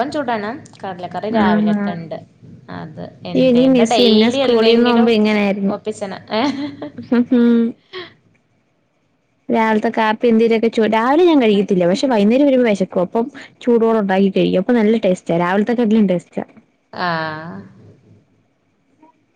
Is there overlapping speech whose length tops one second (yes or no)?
yes